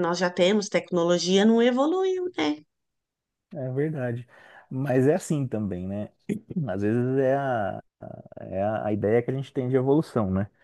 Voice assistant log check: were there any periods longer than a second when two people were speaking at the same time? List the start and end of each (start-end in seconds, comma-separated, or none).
none